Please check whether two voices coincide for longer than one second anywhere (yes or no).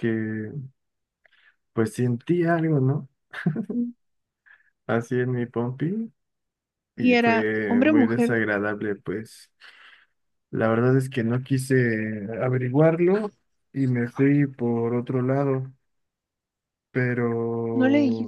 yes